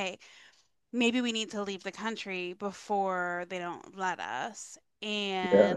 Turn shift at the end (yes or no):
no